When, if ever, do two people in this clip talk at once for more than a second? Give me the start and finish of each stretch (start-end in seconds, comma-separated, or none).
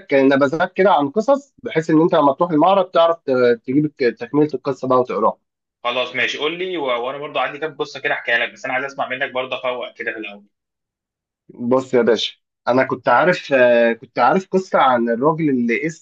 none